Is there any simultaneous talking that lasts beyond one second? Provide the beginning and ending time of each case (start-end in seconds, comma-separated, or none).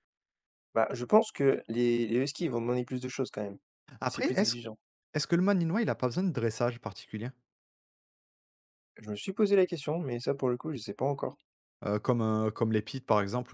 none